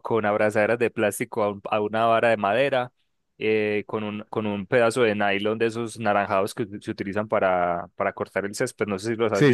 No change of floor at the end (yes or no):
no